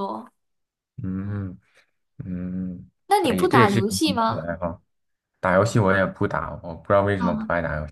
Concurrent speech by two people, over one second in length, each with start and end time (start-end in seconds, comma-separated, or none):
3.1-4.5